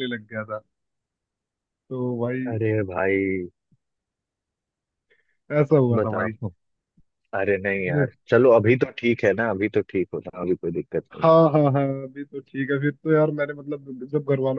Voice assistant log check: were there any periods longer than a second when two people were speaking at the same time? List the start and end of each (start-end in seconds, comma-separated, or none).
none